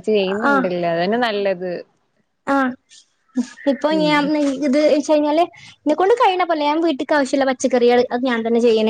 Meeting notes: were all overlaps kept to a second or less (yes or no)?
yes